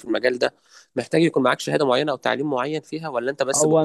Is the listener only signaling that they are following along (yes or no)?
no